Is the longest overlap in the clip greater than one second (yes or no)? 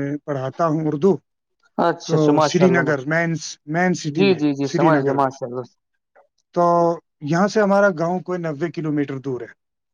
yes